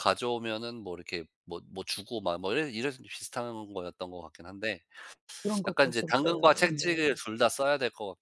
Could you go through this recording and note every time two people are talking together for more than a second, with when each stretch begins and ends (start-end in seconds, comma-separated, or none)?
5.7-7.2